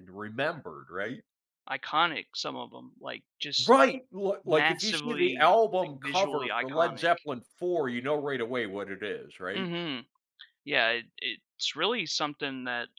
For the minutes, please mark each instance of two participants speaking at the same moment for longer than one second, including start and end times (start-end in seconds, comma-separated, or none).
4.4-7.1